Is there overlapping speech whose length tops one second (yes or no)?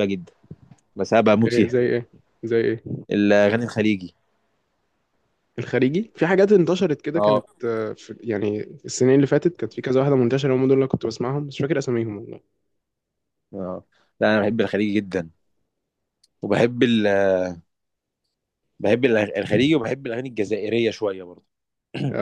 no